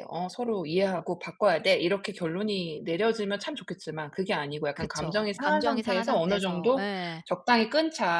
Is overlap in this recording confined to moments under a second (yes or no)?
no